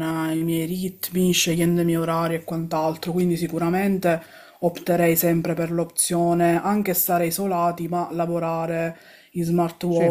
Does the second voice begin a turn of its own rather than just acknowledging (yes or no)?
no